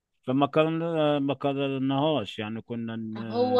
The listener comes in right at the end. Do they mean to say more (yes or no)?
yes